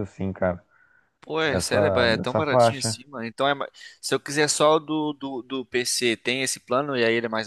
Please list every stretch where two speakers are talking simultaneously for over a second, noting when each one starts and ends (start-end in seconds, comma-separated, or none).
1.4-3.0